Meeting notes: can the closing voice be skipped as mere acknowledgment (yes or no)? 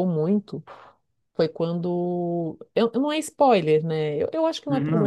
yes